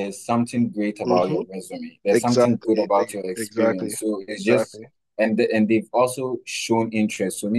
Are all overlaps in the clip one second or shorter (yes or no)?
no